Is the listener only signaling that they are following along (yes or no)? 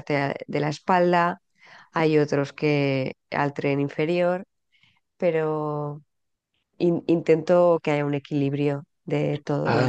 no